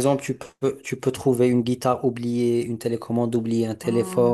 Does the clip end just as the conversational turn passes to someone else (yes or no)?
yes